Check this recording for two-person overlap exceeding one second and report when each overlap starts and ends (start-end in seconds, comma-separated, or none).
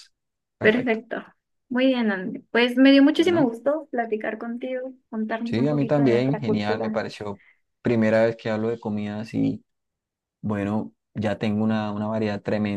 5.4-7.0